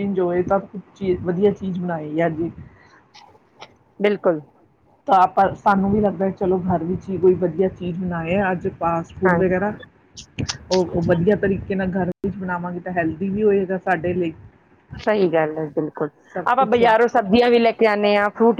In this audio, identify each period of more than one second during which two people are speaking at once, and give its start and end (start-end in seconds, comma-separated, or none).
none